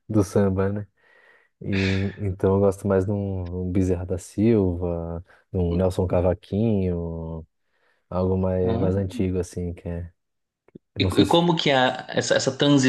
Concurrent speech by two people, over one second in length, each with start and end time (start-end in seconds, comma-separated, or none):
none